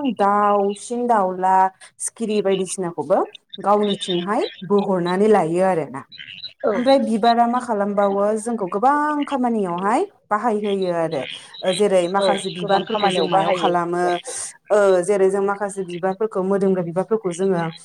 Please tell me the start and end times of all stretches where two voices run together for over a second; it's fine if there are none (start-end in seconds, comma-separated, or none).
12.2-14.0